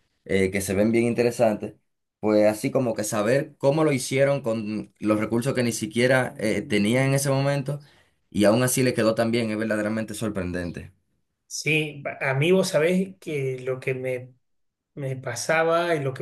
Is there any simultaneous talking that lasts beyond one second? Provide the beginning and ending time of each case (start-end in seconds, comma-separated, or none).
none